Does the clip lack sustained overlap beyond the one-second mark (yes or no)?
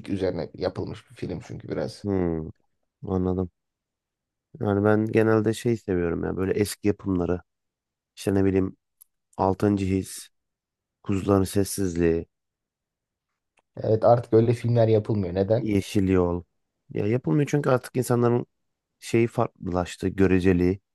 yes